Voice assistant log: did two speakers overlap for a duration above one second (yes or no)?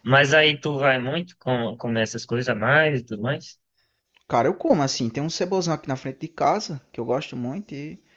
no